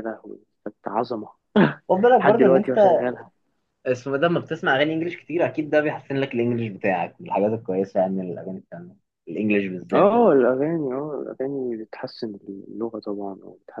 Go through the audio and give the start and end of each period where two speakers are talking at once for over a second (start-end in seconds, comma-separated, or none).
none